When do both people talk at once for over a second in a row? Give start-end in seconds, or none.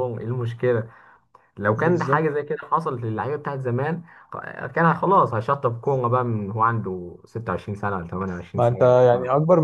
none